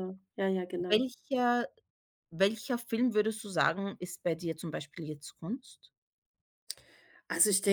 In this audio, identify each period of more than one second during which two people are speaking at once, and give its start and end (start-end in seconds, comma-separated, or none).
none